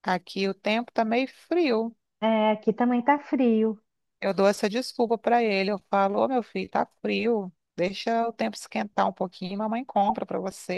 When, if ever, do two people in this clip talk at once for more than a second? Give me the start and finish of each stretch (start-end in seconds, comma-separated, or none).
none